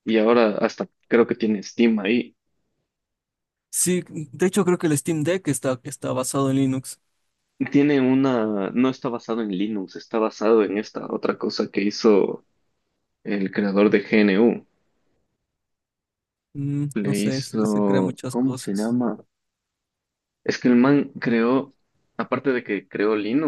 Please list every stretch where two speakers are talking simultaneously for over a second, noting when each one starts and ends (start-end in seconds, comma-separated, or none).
16.9-19.0